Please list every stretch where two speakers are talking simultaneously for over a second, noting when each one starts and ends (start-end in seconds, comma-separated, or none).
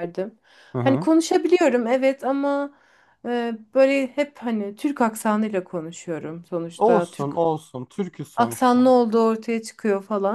none